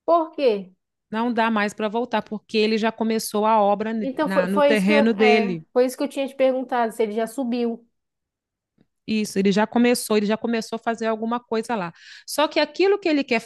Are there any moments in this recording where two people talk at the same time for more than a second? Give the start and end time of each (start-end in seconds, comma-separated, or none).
4.0-5.7